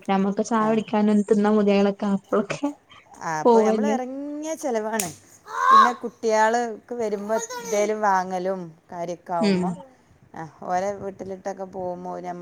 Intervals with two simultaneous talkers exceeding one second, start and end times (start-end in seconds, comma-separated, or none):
none